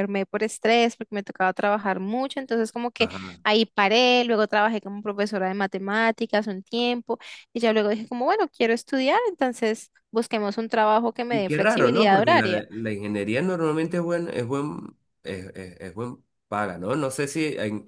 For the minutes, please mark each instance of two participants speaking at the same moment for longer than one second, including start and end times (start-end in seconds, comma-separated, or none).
11.3-12.6